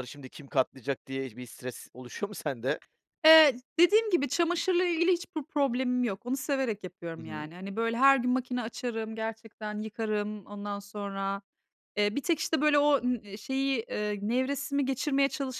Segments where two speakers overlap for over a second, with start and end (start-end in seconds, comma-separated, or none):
none